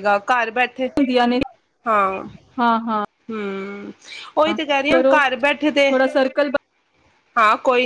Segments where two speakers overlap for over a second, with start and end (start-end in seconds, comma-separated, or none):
none